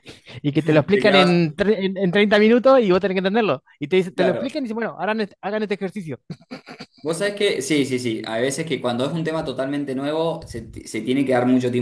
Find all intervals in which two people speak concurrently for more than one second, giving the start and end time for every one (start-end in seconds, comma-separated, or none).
none